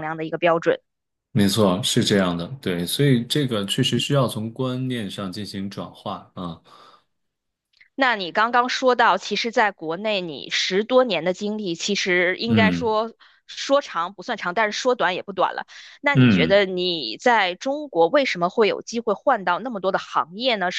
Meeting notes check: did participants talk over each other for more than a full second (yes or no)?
no